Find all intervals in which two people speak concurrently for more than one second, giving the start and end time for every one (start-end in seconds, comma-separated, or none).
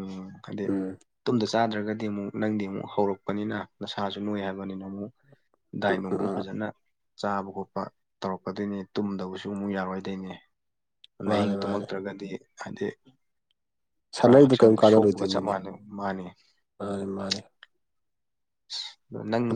14.2-15.5